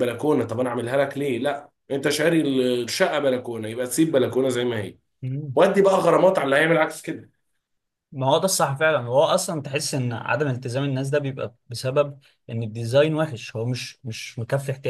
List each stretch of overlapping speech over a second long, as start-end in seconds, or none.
none